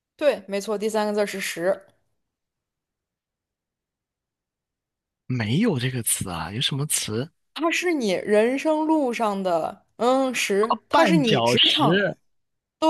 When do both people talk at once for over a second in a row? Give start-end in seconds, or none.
10.6-12.0